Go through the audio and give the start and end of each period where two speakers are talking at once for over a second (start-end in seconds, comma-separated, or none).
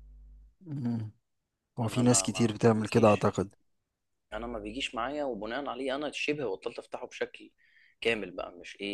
1.9-3.3